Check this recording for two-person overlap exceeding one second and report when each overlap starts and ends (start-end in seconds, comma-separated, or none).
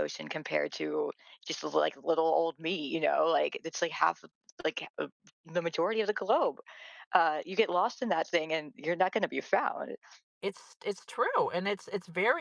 none